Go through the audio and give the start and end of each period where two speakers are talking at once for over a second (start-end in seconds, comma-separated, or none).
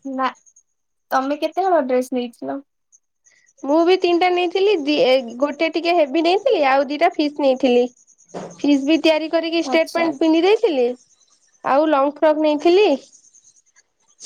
none